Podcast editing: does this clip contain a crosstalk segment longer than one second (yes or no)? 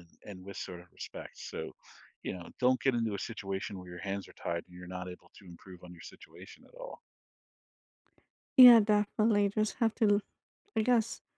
no